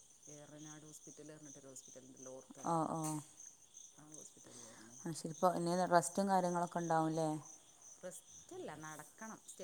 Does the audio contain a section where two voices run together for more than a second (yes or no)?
no